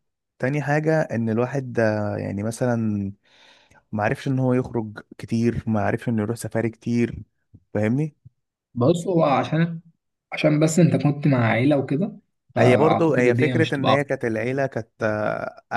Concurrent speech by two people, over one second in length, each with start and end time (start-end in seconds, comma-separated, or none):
12.6-14.1